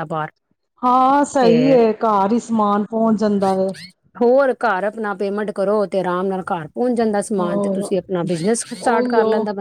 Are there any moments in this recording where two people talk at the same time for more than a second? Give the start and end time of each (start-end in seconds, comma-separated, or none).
none